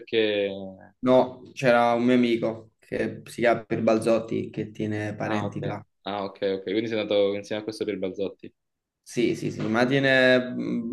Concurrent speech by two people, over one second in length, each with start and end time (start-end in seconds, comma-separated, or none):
none